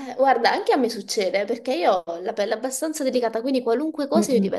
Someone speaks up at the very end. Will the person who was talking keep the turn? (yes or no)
yes